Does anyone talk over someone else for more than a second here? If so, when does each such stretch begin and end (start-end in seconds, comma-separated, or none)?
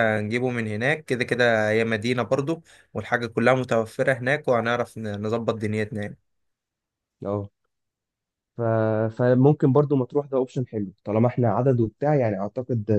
none